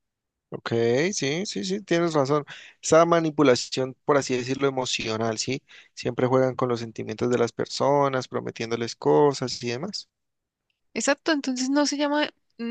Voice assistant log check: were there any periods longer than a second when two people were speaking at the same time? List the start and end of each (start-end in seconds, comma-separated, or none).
none